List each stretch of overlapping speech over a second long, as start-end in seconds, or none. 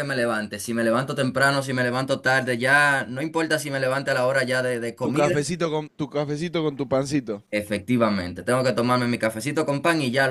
none